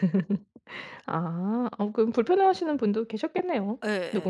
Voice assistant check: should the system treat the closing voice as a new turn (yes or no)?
yes